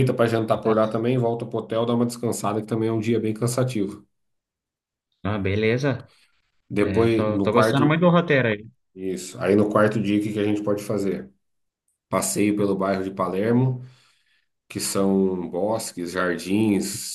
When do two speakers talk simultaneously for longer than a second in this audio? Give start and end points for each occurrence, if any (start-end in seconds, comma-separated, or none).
6.8-8.1